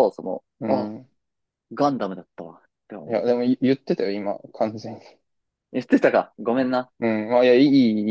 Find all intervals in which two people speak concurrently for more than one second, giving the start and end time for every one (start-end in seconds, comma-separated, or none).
none